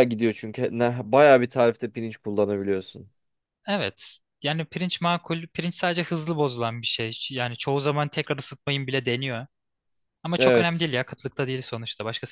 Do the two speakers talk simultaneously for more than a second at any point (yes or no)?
no